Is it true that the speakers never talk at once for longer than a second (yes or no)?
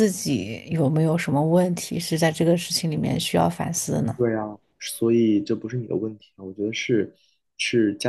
yes